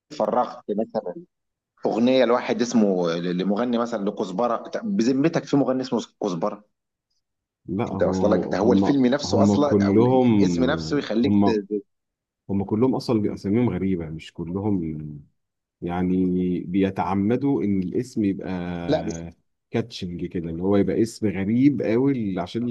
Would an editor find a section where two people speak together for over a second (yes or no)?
yes